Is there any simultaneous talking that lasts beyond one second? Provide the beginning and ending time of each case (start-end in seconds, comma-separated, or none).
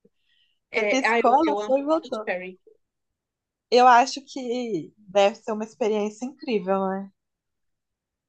0.8-2.3